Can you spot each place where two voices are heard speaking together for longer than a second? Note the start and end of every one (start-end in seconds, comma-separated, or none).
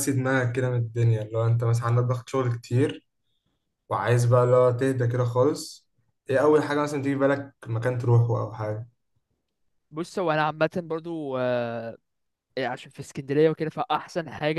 none